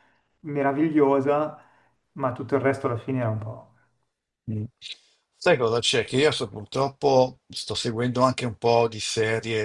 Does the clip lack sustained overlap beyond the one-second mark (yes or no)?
yes